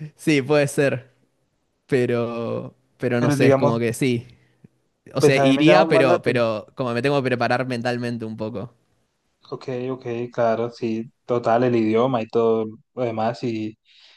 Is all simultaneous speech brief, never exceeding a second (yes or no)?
no